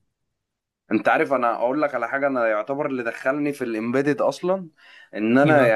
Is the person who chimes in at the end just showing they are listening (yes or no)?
yes